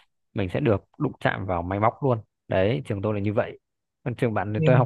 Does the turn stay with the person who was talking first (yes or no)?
yes